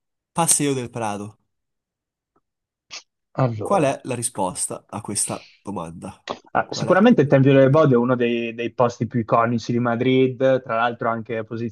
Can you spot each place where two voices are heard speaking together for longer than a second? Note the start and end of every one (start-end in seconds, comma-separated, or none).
none